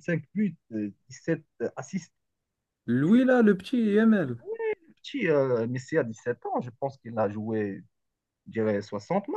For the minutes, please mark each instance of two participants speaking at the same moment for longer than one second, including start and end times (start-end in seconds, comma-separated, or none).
none